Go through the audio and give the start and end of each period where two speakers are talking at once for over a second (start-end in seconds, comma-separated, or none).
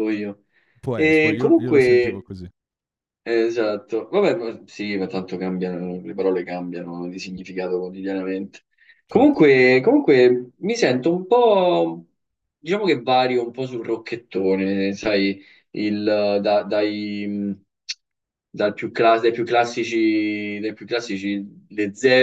0.9-2.3